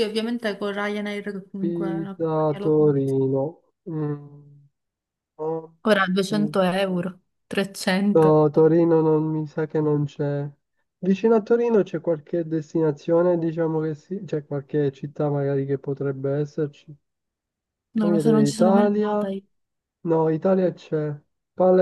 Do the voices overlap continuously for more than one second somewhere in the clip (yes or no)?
yes